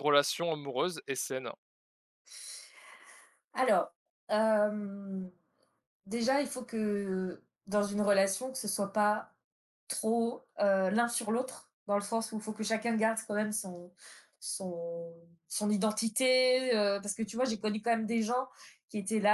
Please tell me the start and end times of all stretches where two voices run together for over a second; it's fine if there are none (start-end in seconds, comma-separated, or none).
none